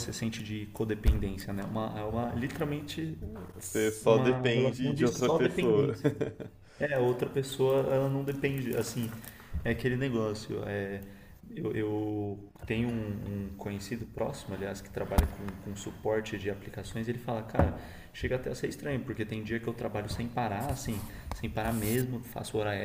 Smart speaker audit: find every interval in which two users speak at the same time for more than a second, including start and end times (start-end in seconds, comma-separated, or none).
4.0-6.0